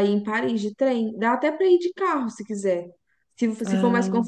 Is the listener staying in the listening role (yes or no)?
yes